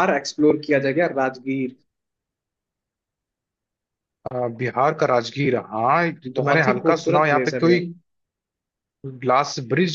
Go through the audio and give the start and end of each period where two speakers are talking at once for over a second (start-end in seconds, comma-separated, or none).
6.3-7.8